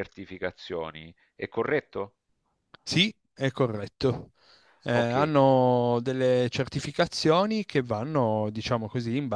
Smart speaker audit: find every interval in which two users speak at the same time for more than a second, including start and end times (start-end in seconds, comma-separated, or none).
none